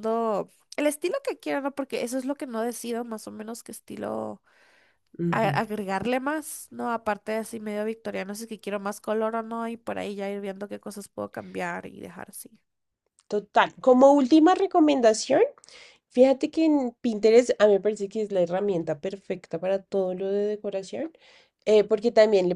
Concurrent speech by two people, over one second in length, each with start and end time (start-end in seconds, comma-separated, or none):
none